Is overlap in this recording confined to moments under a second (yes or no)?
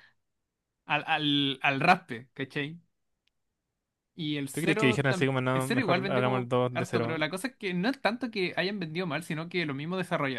no